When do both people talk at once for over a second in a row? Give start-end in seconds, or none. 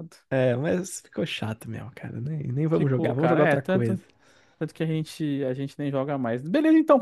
2.7-4.0